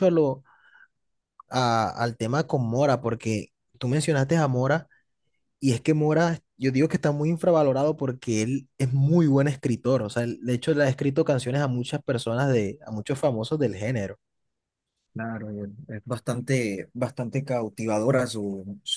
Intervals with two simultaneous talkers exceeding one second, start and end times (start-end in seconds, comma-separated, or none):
none